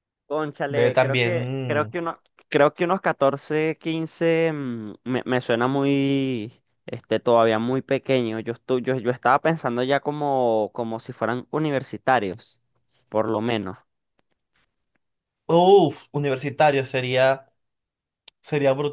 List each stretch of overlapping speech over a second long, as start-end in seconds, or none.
0.7-1.9